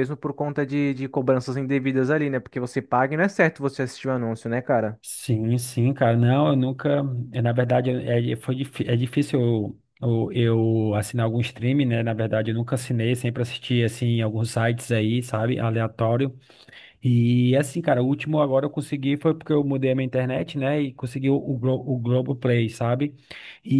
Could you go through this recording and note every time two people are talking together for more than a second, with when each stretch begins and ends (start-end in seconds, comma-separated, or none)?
none